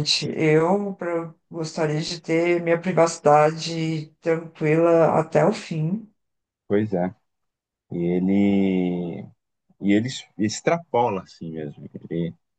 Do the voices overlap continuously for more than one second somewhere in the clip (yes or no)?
no